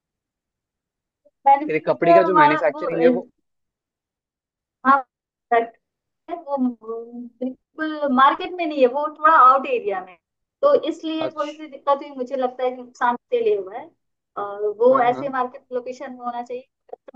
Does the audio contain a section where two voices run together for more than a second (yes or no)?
yes